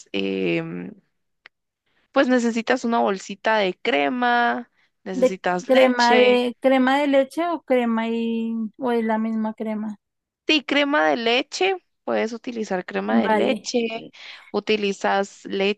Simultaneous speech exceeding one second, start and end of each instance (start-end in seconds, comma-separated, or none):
5.1-6.5